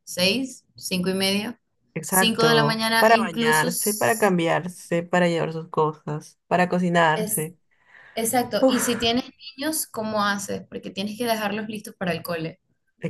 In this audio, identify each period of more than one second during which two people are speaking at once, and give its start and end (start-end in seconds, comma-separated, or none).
2.1-4.3